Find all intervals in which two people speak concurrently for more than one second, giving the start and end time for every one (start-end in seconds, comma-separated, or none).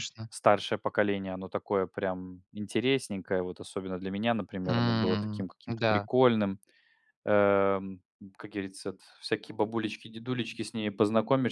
4.6-6.1